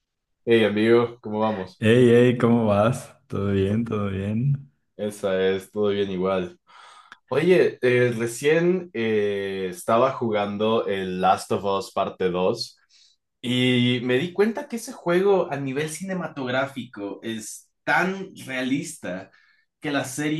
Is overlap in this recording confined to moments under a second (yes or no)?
yes